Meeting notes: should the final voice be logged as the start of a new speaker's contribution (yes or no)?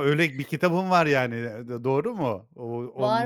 yes